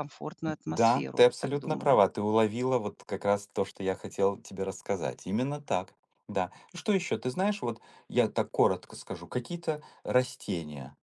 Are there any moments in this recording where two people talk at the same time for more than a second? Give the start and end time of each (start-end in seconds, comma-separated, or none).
0.7-1.9